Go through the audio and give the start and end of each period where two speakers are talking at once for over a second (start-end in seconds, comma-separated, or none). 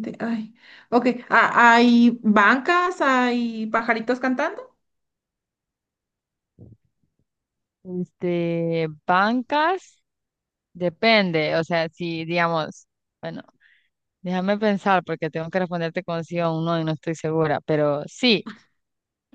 none